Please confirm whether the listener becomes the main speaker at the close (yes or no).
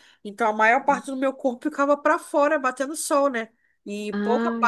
no